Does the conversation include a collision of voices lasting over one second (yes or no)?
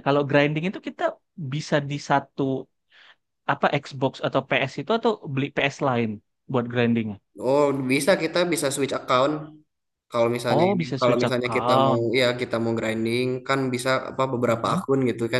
yes